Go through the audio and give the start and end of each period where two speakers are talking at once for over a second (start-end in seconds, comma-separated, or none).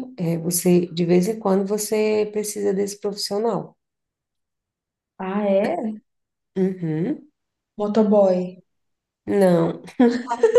none